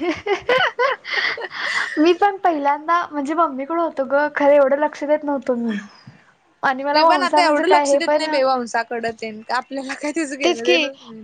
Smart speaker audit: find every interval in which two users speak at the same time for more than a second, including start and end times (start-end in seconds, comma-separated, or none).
6.9-8.3